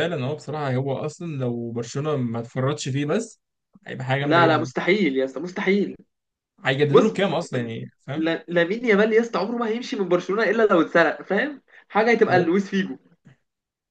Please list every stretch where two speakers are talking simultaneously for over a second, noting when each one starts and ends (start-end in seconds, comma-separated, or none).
none